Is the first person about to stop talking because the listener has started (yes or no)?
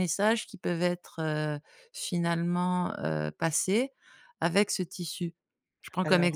no